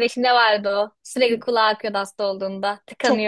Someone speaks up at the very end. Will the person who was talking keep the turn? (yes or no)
no